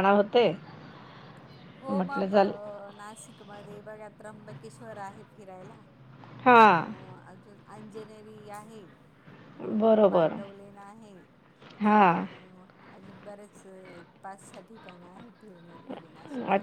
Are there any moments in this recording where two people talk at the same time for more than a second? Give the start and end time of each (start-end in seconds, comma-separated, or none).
none